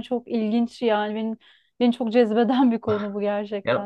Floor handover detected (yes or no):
yes